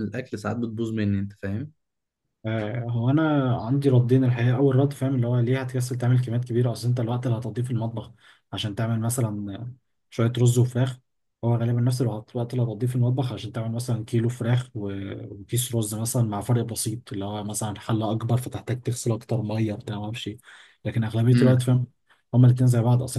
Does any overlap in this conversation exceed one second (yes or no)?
no